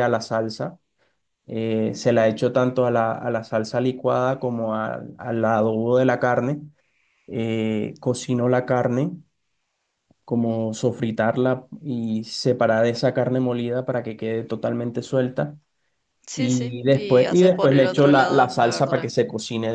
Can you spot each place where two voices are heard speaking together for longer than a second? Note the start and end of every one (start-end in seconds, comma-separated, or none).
16.3-19.1